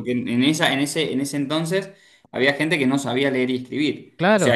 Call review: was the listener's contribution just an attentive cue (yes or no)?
yes